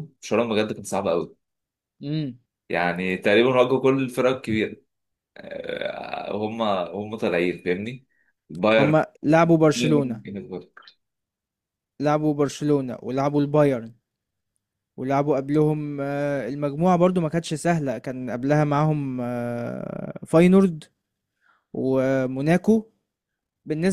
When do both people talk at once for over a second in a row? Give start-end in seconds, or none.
none